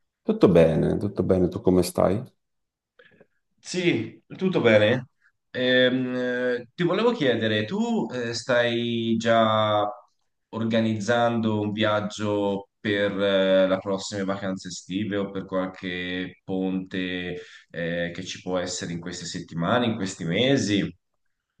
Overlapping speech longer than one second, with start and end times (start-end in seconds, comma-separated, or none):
none